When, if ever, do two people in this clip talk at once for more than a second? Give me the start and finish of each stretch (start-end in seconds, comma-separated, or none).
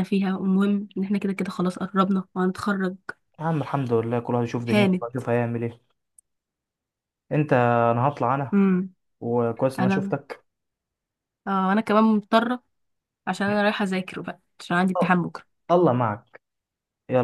none